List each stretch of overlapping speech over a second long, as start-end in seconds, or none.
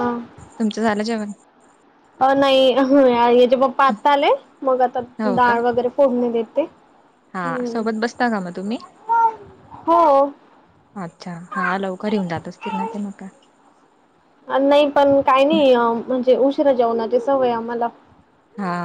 none